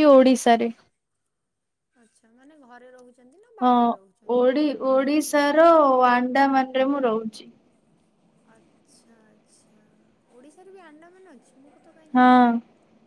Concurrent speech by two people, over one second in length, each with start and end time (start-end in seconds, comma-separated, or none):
none